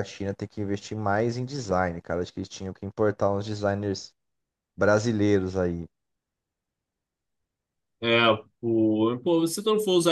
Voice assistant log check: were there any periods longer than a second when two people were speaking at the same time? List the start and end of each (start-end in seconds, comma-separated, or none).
none